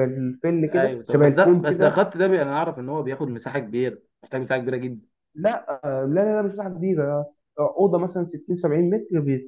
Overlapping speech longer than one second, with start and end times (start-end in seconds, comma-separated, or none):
0.7-2.0